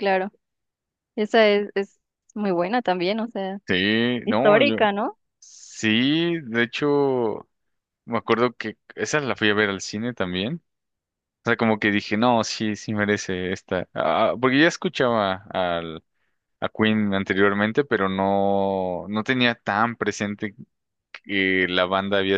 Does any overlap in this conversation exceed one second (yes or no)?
no